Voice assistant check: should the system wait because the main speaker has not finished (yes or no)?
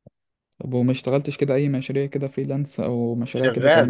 no